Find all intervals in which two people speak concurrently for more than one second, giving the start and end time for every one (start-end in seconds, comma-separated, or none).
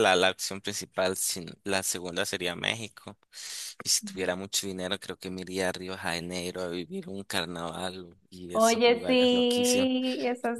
8.5-9.9